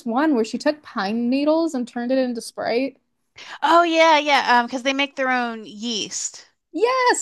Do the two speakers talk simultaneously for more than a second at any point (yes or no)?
no